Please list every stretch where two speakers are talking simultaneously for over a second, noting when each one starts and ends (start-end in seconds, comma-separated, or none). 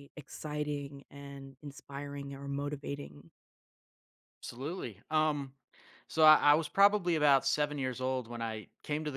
none